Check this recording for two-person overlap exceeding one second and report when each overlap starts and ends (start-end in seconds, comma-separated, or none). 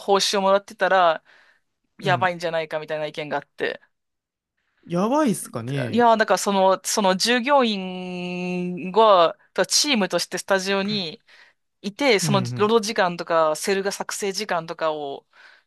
none